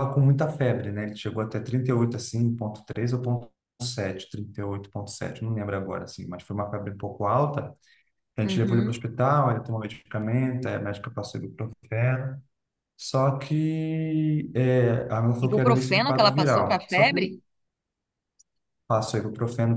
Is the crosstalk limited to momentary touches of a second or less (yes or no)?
no